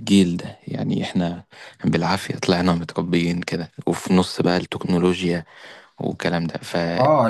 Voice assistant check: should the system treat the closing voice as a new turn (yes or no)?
yes